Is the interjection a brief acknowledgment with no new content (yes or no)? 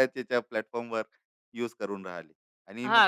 no